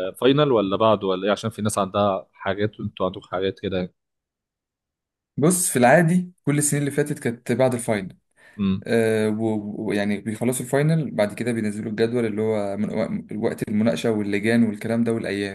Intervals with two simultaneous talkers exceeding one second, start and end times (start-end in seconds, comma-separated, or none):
none